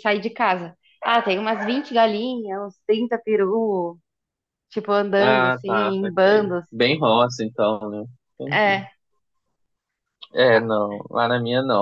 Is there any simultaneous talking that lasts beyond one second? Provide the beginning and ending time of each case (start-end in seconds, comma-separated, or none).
5.2-6.6